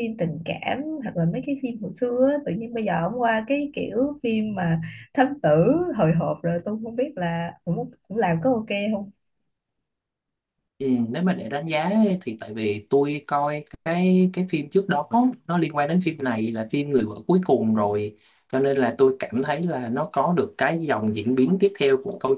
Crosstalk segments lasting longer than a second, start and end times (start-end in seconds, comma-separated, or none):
none